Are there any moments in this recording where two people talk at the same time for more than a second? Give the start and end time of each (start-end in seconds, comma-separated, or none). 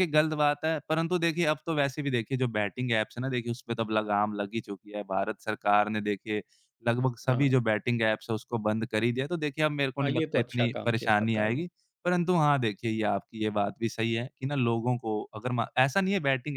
10.0-11.6